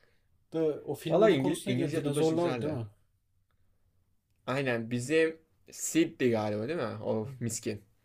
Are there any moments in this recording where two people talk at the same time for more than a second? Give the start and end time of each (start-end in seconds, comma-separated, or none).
1.1-2.8